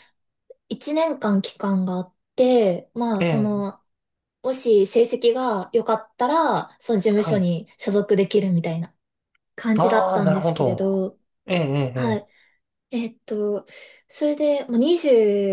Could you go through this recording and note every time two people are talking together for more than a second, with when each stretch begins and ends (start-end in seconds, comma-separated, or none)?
9.8-11.1